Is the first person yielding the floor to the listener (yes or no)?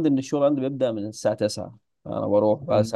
no